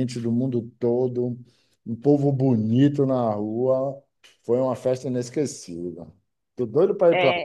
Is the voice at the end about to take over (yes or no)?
yes